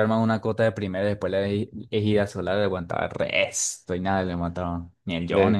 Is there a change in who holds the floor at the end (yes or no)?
yes